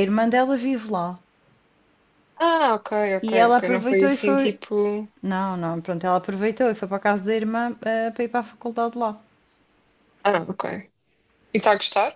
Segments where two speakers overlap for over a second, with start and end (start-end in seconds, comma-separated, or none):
3.2-4.6